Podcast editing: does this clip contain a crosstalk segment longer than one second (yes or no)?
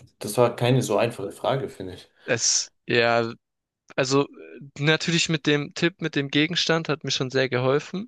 no